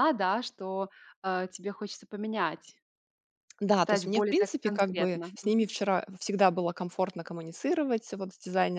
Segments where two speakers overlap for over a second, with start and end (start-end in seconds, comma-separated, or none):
3.7-5.3